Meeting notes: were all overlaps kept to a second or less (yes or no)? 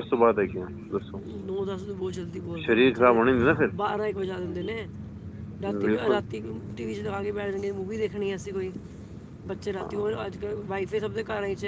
yes